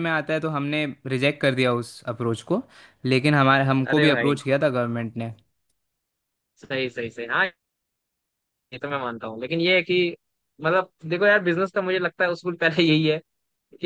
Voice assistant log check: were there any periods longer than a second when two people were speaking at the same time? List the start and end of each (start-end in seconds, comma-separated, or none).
none